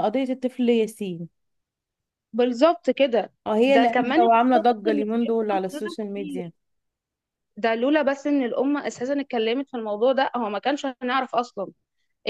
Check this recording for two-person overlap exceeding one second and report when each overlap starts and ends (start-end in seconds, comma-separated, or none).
3.5-6.4